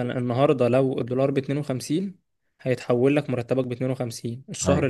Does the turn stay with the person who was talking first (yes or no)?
yes